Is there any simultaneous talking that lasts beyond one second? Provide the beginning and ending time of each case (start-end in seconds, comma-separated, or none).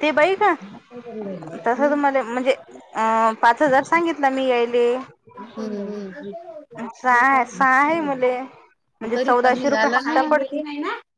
9.3-10.6